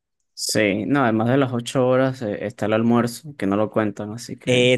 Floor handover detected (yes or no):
yes